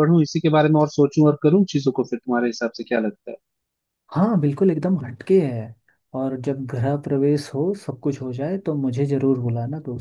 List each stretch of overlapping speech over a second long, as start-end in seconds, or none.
none